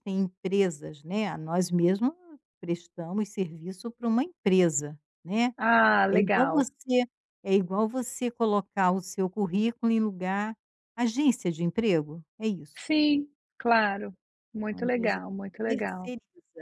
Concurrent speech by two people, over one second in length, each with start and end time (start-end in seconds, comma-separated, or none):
14.7-16.1